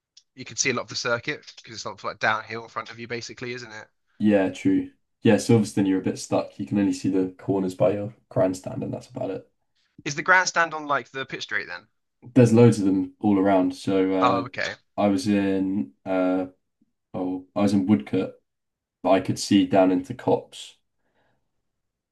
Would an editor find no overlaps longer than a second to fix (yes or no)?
yes